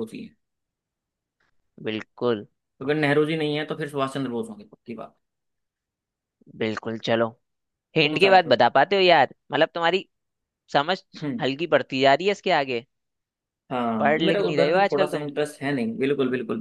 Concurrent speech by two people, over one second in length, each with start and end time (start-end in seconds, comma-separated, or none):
14.0-15.2